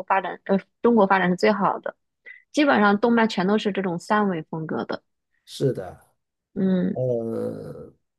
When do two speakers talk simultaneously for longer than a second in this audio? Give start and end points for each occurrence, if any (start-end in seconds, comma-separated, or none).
none